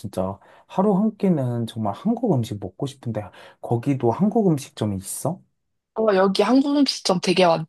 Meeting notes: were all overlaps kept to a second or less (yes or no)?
yes